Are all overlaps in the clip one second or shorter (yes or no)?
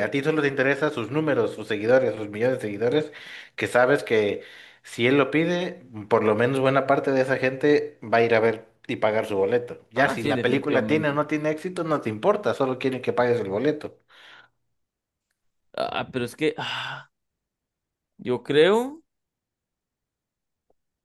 no